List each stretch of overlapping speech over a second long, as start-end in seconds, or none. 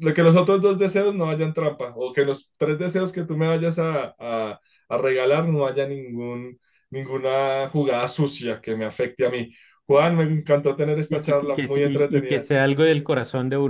11.1-12.5